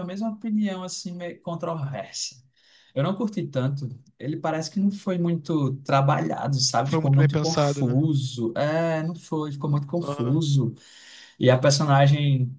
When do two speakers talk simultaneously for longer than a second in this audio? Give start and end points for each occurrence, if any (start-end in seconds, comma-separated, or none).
6.8-8.0